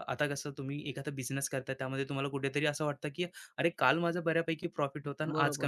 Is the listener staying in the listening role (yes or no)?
no